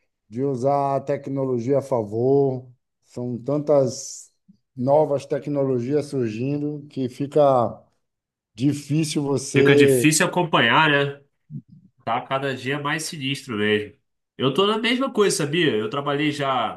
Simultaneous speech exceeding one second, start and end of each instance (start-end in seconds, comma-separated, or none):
none